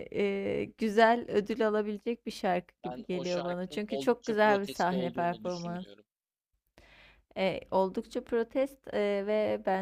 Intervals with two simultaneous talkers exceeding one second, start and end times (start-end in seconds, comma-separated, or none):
2.8-5.9